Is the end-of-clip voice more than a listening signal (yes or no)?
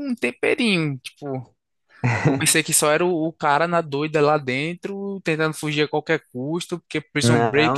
yes